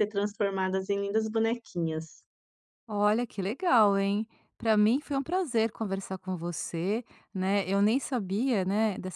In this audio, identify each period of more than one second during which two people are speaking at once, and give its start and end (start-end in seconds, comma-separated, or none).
none